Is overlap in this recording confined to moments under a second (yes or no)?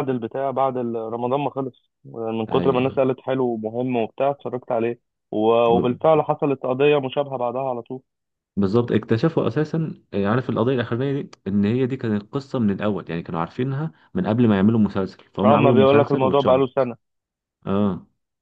no